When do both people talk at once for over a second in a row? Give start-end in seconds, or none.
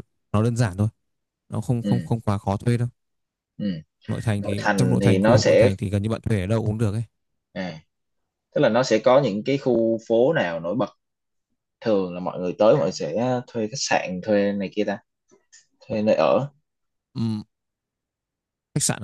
4.4-5.7